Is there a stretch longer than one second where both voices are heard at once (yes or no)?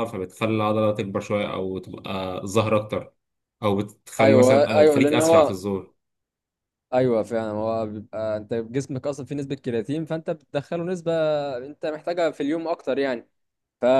yes